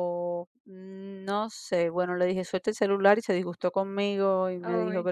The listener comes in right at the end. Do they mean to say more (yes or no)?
no